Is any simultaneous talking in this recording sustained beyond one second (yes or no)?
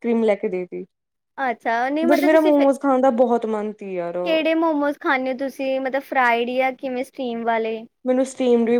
no